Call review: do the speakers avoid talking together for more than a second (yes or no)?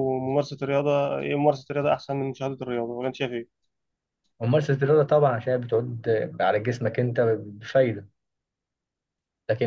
yes